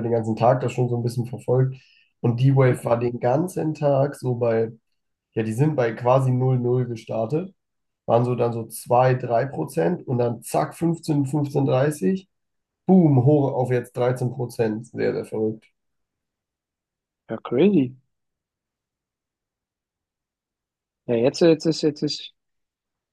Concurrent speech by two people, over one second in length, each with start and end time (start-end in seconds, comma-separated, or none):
none